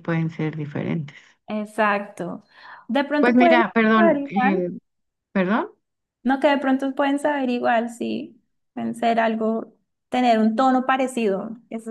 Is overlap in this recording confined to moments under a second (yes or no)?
no